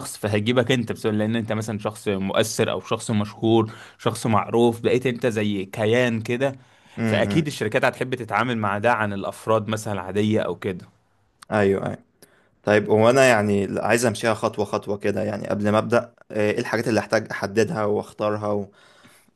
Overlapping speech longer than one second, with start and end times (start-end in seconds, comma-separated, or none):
none